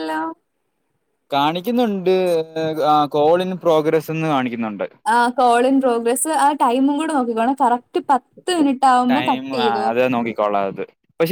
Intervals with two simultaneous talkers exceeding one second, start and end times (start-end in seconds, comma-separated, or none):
none